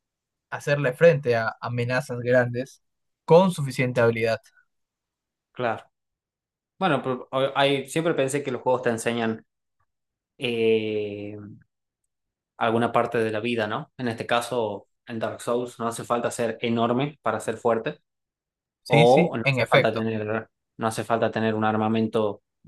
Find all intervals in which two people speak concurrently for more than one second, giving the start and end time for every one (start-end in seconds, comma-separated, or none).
18.9-20.1